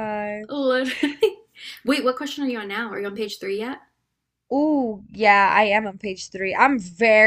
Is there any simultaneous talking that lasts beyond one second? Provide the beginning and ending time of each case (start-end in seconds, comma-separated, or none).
none